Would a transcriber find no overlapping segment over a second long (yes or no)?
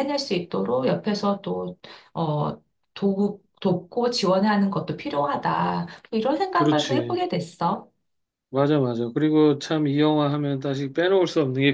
yes